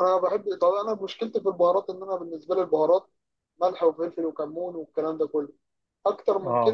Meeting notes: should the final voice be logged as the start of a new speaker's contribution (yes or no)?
no